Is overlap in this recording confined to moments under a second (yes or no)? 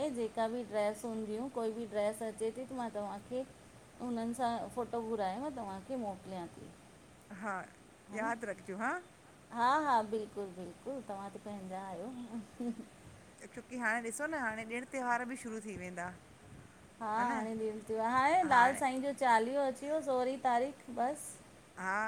yes